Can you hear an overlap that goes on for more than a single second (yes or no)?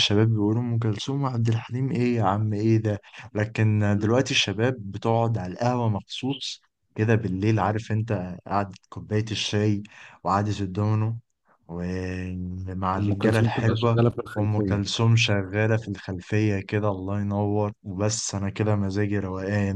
yes